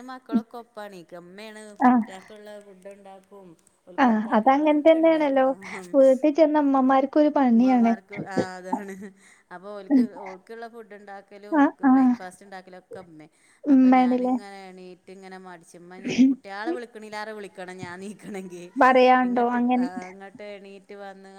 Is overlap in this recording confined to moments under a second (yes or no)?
no